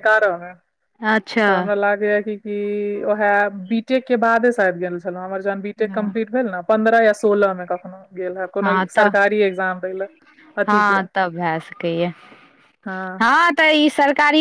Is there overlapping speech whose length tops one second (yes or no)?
no